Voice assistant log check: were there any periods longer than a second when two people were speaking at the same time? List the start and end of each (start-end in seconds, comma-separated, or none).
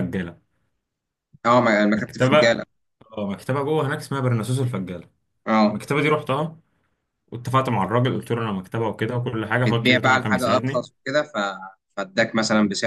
9.7-10.9